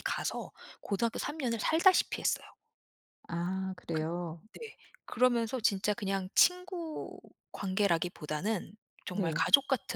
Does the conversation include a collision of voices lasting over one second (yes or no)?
no